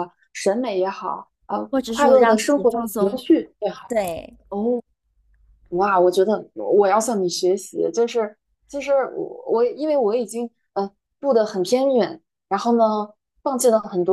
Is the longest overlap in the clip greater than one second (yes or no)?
yes